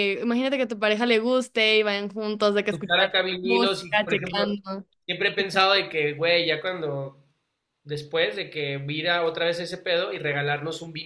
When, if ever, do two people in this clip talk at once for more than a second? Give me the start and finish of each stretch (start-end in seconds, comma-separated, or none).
2.7-4.6